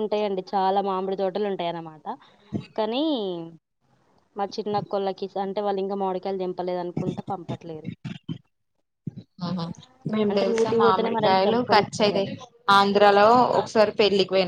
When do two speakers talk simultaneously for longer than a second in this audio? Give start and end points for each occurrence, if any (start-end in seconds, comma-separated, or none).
10.3-12.3